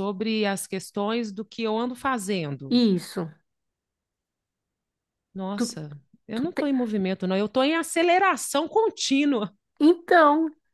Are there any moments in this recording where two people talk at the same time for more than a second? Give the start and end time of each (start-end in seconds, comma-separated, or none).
none